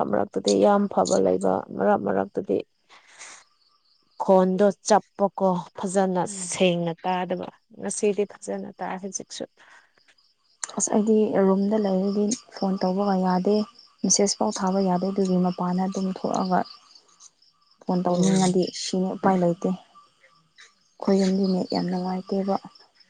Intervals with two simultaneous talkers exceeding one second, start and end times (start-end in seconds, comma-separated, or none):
none